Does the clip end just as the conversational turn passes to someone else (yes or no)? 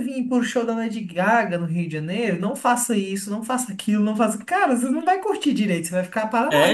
yes